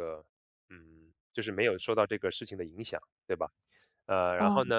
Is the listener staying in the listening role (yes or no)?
yes